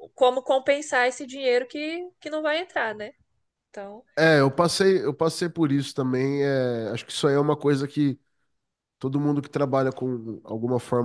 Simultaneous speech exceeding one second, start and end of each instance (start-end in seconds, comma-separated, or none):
none